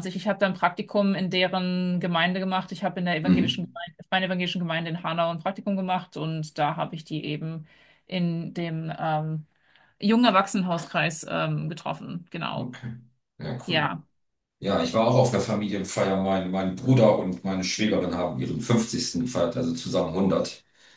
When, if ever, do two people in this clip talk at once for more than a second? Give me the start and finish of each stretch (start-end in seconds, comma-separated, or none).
none